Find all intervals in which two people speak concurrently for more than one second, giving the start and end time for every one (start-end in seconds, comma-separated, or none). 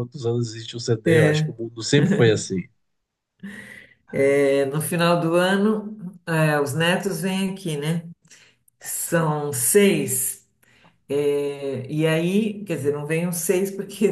none